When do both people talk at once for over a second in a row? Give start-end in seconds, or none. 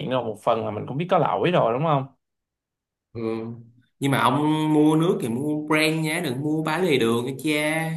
none